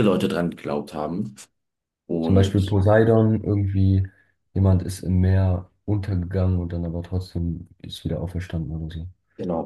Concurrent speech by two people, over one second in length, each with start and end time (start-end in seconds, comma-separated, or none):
none